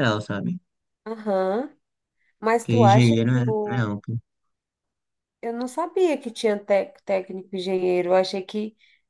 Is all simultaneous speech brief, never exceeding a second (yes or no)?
no